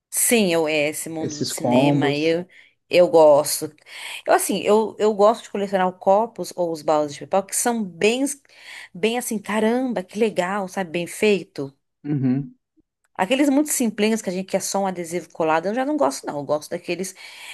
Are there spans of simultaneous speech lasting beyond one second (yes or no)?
yes